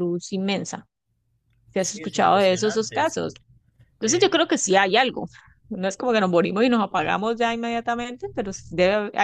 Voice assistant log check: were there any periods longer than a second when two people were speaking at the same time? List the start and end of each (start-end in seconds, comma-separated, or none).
1.8-3.2